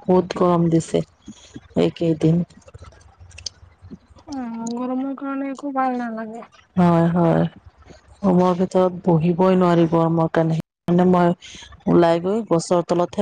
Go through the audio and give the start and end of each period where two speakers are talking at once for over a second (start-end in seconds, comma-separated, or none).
none